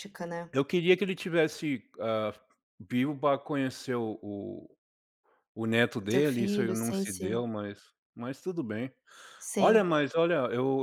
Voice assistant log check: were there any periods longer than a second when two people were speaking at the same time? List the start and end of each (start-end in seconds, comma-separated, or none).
6.0-7.5